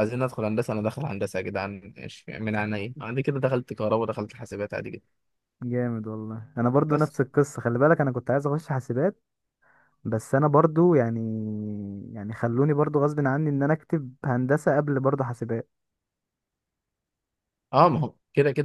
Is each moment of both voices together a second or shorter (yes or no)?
yes